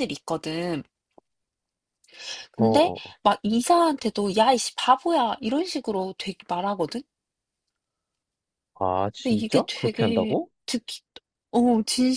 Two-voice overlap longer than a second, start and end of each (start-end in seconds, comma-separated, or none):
9.1-10.5